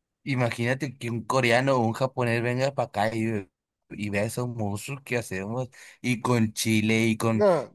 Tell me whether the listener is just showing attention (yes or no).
yes